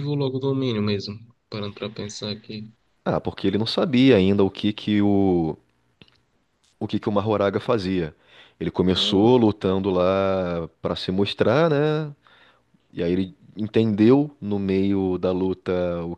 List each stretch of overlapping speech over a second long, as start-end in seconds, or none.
none